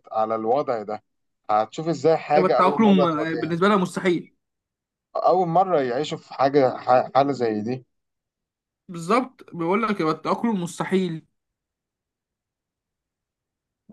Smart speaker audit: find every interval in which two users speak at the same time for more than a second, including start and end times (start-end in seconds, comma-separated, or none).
2.3-3.6